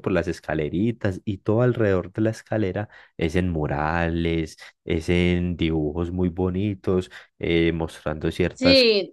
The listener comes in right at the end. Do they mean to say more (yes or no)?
yes